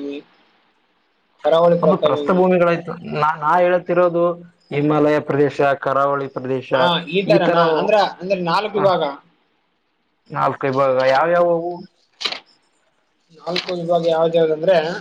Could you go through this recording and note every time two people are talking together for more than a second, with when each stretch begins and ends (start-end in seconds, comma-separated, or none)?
none